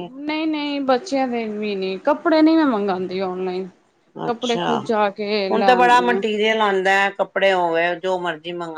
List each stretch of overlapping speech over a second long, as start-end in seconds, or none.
none